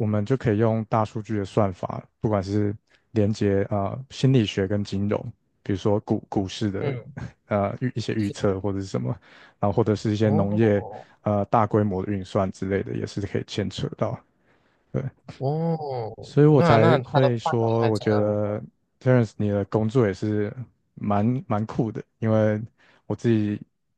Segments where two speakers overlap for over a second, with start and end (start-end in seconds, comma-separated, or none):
16.5-18.6